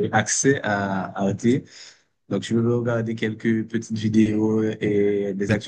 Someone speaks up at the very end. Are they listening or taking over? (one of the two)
listening